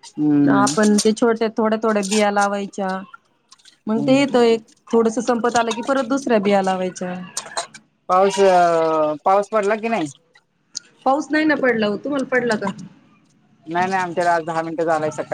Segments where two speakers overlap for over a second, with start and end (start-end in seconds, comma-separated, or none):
none